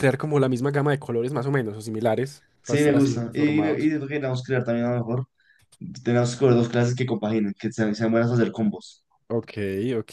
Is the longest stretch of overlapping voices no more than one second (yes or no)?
no